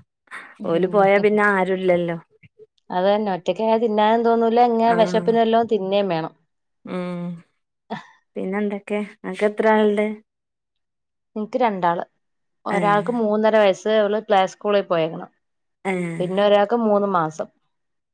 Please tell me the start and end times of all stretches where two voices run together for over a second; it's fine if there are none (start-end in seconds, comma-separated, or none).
none